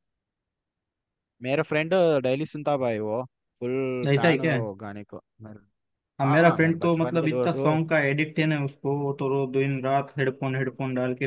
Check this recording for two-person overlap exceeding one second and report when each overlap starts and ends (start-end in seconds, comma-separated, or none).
6.2-7.8